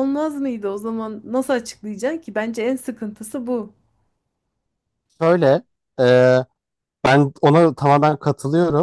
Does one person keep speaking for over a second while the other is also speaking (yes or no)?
no